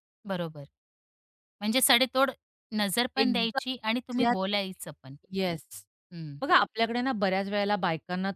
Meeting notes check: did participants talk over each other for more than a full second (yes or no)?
yes